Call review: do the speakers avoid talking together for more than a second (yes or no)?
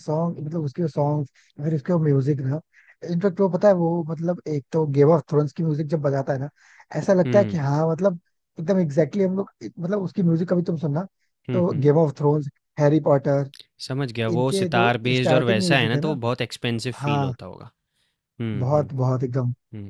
no